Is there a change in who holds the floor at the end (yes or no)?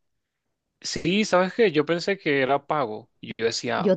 no